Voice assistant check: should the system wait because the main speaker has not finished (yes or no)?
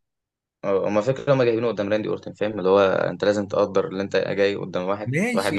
no